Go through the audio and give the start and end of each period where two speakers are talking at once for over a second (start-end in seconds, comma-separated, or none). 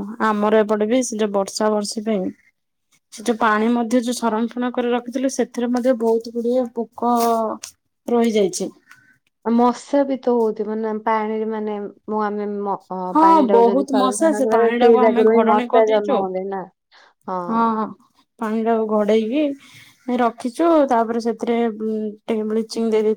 13.3-16.2